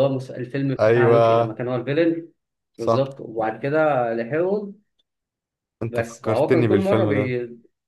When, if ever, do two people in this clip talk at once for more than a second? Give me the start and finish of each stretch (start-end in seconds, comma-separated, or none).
5.9-7.3